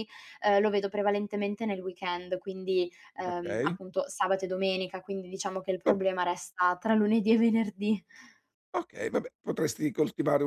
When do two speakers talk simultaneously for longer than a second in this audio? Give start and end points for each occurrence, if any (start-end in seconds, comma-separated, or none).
none